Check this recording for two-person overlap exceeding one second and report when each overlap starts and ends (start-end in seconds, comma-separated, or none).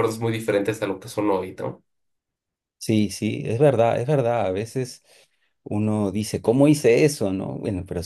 none